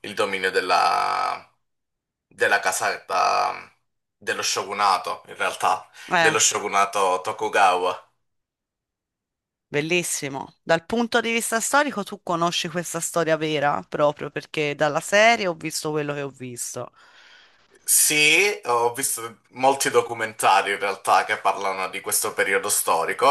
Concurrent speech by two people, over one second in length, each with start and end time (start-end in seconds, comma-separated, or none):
none